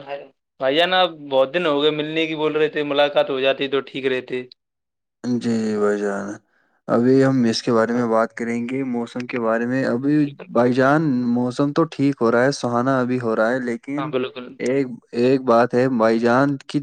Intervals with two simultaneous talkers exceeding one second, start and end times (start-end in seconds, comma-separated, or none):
none